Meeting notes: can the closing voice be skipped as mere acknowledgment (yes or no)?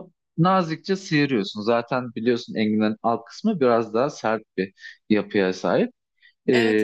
no